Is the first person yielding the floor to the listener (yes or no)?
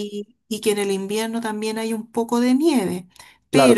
yes